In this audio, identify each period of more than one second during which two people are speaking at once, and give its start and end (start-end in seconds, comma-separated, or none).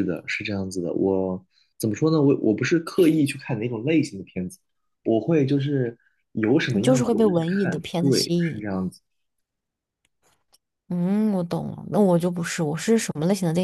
6.7-8.6